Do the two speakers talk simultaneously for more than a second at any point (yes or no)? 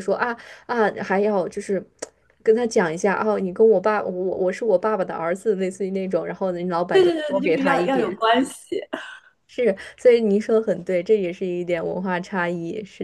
yes